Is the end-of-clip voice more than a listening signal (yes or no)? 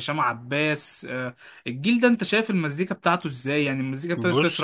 yes